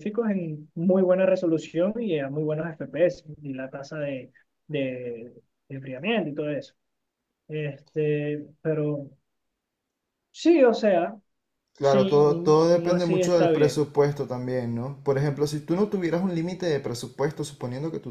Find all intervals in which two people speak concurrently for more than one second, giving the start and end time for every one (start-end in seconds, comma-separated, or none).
11.8-13.9